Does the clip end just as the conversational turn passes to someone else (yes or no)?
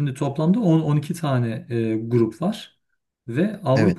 no